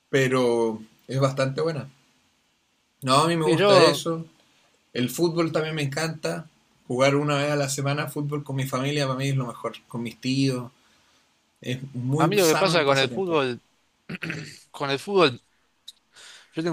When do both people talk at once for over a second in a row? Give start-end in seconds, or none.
12.2-13.4